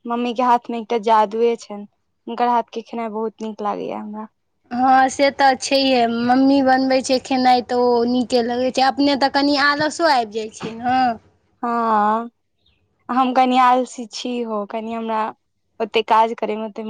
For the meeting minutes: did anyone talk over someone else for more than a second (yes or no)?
no